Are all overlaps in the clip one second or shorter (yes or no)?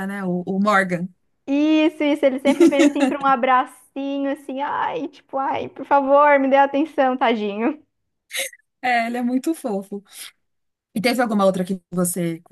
yes